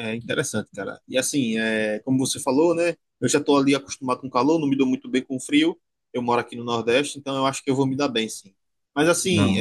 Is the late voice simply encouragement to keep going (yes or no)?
yes